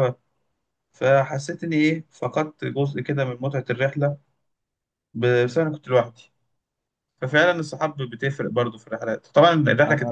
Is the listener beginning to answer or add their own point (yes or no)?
no